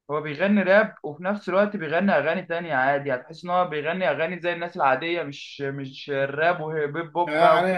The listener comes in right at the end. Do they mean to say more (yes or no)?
yes